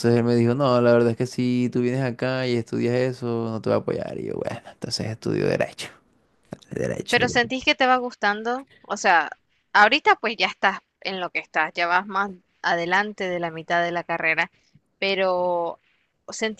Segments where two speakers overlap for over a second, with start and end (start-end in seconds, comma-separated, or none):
none